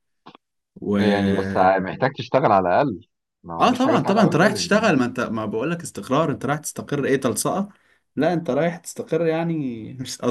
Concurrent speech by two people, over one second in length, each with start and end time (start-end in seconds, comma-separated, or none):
3.6-4.9